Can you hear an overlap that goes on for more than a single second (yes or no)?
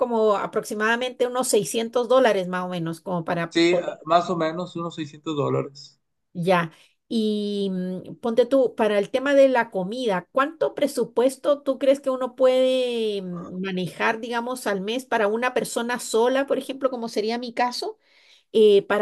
no